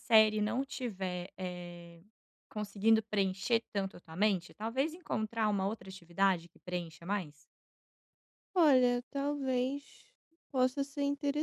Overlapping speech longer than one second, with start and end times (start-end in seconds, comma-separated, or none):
none